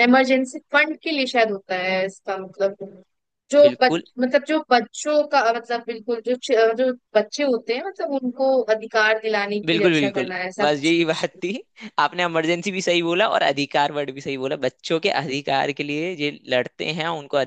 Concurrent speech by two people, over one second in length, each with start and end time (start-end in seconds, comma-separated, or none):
9.7-11.4